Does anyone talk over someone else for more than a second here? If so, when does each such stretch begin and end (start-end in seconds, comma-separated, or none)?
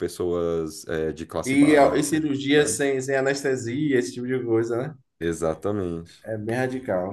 1.4-2.8